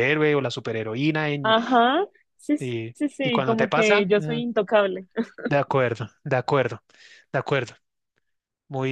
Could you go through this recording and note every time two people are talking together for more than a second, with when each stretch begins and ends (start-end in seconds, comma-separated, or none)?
2.9-4.4